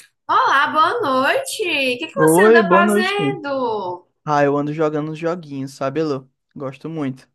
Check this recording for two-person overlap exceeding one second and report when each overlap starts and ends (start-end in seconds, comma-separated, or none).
2.2-3.4